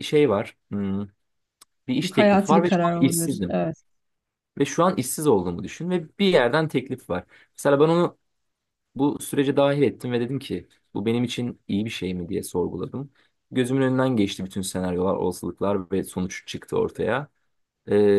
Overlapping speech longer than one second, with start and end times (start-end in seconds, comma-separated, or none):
2.0-3.6